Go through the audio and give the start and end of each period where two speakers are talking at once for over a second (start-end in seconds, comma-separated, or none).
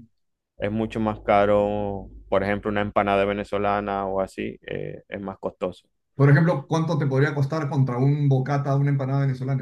none